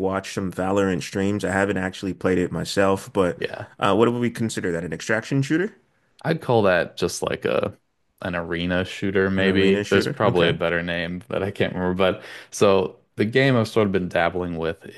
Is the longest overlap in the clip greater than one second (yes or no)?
yes